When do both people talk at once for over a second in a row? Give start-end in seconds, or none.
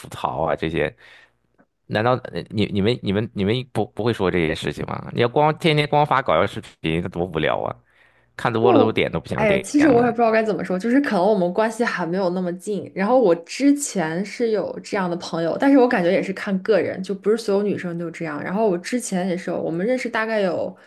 8.6-10.1